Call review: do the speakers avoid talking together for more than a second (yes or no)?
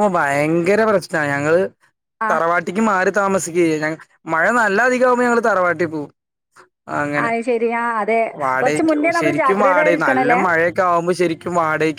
no